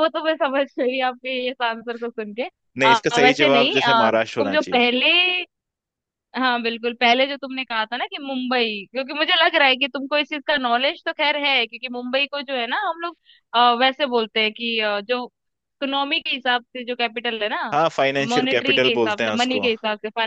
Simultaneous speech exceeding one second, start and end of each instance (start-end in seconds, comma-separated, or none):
2.8-4.8, 18.3-19.7